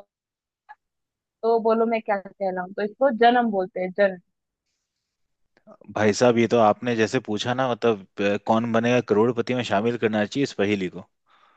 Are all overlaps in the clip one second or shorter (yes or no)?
yes